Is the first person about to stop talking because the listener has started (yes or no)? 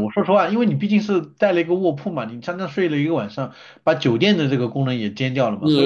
yes